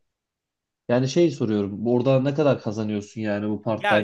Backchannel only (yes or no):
no